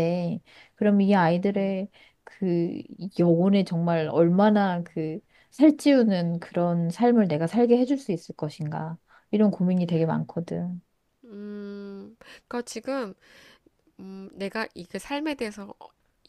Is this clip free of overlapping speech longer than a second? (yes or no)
yes